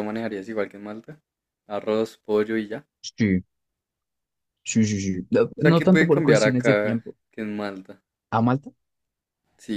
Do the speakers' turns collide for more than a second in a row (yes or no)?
yes